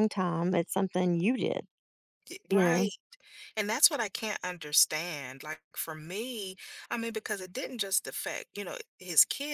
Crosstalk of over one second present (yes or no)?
no